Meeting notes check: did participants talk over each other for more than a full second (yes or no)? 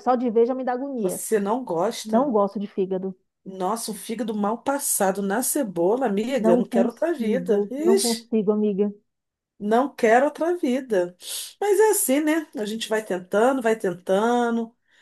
yes